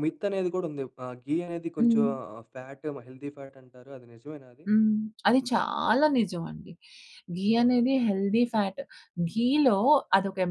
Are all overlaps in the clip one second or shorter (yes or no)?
yes